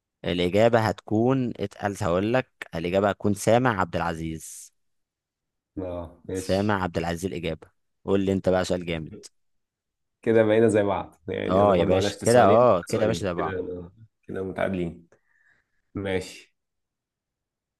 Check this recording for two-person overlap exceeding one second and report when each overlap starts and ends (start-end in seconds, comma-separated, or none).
11.5-13.6